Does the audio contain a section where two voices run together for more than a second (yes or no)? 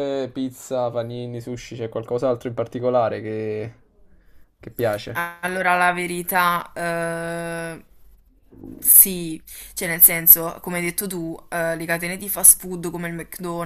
no